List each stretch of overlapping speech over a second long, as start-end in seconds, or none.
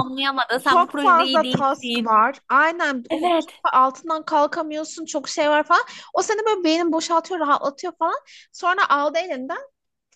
0.6-2.1